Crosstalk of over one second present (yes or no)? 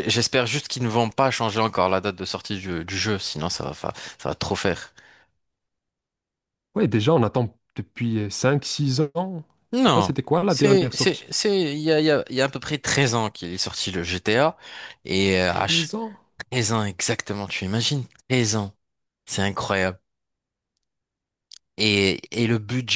yes